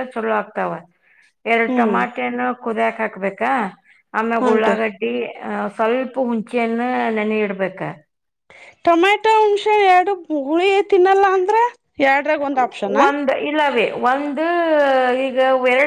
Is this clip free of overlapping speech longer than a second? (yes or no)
yes